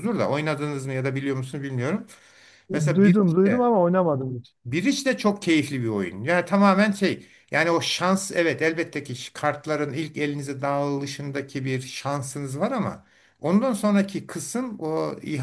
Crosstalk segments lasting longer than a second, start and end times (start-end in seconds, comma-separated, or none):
none